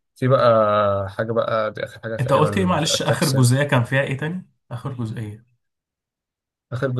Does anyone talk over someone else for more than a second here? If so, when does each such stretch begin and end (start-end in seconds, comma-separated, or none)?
2.2-3.6